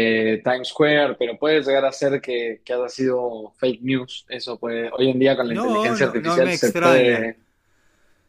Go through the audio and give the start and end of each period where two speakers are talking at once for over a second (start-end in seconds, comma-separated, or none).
5.5-7.3